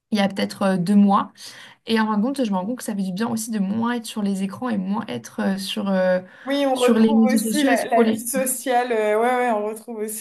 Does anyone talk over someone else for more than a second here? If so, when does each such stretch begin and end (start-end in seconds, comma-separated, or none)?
6.7-8.2